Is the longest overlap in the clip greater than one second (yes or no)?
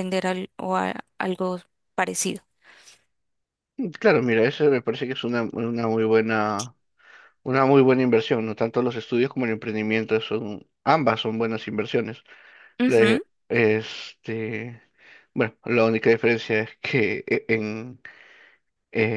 no